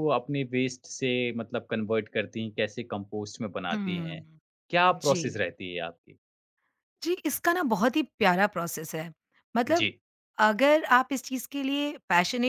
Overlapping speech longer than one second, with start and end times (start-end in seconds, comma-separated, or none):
none